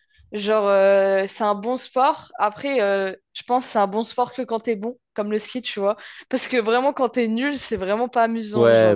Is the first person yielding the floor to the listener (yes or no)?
yes